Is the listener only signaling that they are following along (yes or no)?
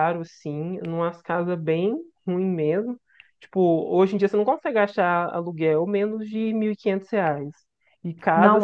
yes